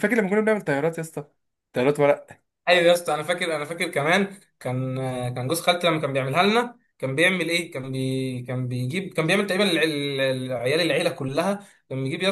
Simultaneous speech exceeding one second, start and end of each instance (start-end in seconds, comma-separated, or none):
none